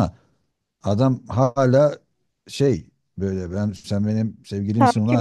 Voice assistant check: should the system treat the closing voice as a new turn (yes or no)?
yes